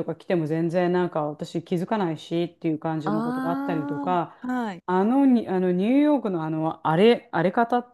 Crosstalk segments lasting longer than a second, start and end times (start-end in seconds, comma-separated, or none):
3.0-4.4